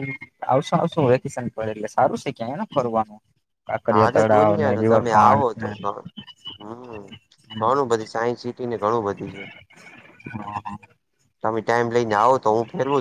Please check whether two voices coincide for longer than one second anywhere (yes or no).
yes